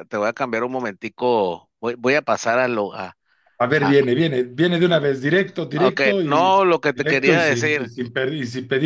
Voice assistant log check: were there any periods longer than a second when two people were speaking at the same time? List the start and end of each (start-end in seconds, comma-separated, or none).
5.7-7.9